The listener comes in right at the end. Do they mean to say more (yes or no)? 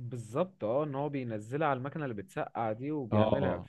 yes